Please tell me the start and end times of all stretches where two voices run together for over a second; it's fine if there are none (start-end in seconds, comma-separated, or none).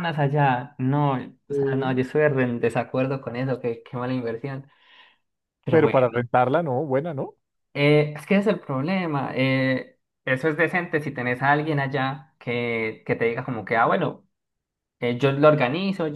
none